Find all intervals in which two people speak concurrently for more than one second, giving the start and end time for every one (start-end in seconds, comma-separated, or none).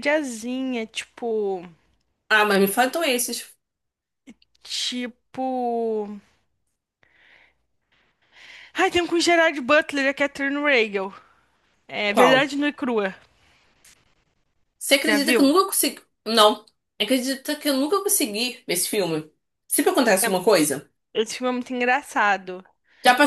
none